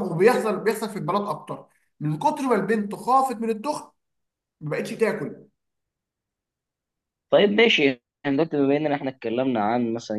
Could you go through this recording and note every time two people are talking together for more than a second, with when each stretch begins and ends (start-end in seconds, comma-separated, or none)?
none